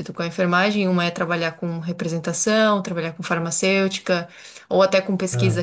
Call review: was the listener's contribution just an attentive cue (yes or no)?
yes